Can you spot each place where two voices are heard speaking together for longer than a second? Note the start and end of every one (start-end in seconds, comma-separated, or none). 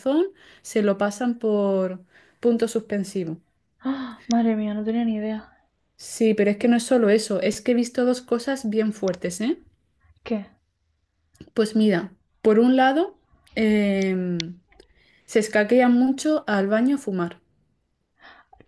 none